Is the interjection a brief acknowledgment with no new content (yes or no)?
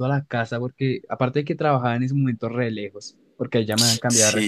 yes